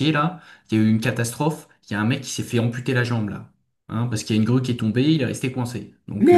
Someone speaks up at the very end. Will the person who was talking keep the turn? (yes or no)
no